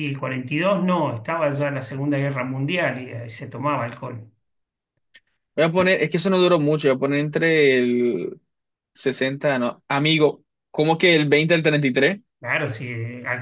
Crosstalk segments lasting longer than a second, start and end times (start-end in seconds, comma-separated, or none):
none